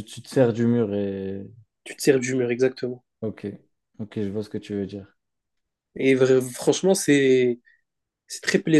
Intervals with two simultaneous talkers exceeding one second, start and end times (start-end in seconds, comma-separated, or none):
none